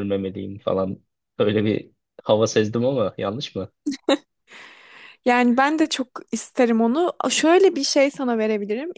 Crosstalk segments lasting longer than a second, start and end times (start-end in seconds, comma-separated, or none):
none